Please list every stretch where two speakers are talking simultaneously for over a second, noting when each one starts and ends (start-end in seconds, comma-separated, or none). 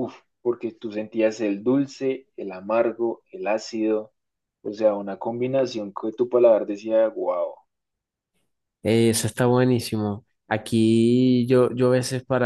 none